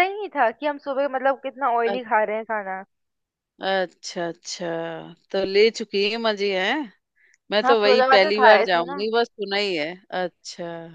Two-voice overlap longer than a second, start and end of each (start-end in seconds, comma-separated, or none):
7.6-9.0